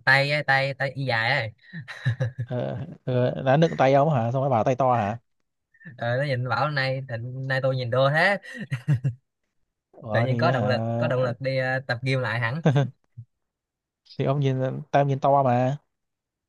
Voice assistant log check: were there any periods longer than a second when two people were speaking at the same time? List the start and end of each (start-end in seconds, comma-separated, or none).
10.1-11.3